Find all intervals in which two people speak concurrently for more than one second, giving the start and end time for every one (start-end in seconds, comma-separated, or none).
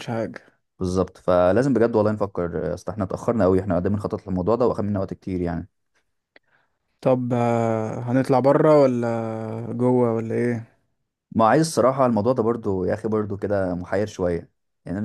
none